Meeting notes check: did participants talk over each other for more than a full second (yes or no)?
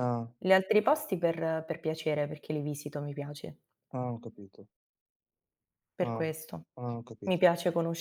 no